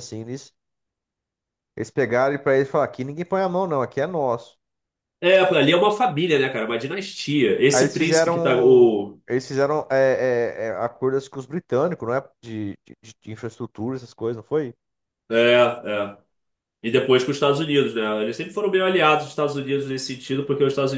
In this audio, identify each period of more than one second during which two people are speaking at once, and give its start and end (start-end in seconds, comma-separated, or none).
7.7-9.2